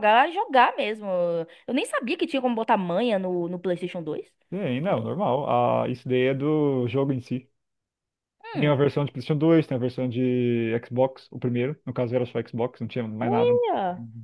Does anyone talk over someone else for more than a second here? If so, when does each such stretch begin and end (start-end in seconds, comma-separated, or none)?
none